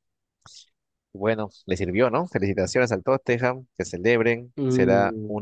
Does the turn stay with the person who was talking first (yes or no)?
yes